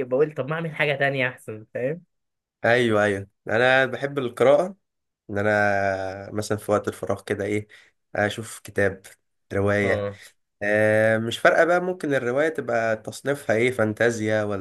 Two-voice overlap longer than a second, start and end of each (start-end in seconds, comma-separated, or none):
none